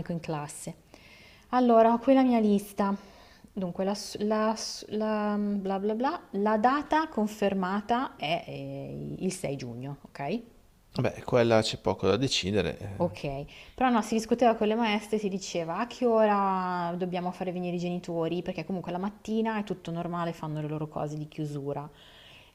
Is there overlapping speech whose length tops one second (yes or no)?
no